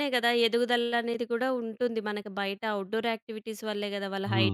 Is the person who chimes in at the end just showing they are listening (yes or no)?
no